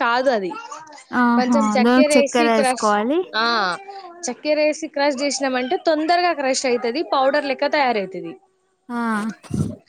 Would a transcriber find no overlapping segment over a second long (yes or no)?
no